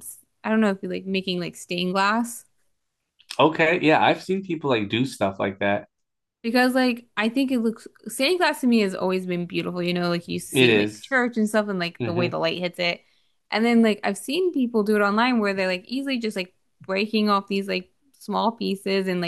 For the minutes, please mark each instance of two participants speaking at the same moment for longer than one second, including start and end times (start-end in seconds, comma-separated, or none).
8.3-9.5